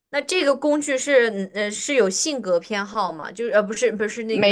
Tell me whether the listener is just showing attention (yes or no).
yes